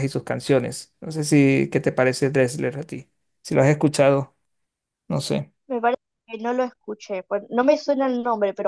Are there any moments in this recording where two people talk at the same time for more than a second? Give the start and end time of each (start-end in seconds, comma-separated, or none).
none